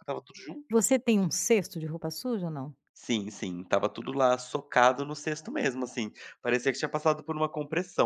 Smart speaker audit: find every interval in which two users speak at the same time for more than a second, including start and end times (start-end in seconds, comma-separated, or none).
none